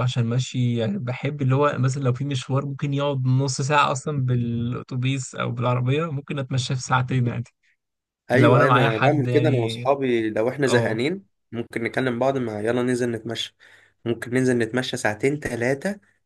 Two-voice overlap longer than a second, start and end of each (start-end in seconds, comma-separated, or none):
8.3-9.9